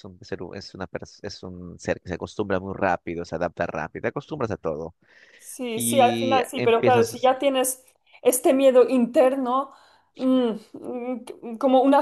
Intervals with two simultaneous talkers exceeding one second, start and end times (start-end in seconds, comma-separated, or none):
5.8-7.3